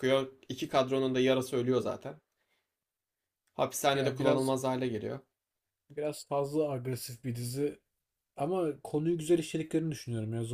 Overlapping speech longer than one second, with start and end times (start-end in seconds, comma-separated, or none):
none